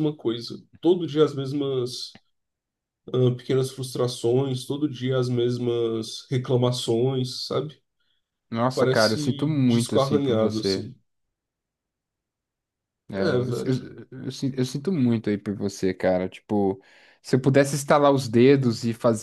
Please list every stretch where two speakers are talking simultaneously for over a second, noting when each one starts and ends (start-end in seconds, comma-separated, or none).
8.7-10.9